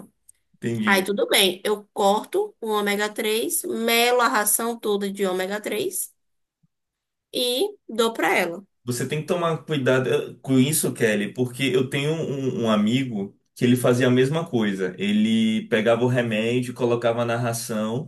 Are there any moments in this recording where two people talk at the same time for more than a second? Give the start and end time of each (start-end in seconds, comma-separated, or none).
none